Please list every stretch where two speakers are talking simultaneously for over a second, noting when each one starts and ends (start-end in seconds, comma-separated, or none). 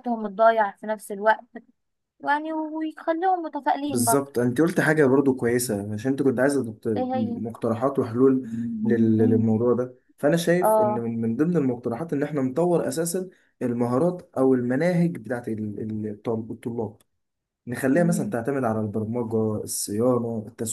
none